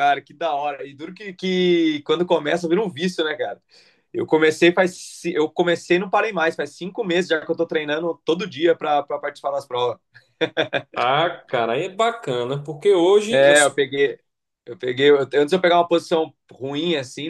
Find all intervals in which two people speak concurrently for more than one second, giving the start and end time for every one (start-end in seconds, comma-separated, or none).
none